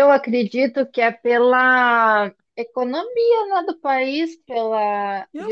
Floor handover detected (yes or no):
yes